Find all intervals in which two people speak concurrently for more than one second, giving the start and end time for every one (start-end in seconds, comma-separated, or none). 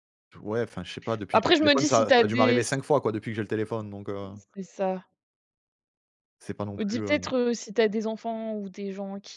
1.3-2.6